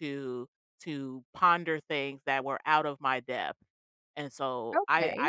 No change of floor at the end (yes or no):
yes